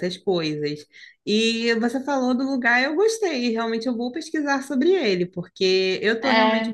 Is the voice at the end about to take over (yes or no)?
no